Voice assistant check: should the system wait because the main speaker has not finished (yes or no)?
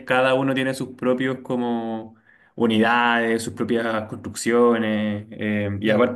yes